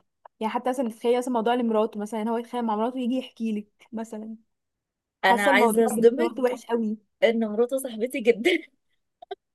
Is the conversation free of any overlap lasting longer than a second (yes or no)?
no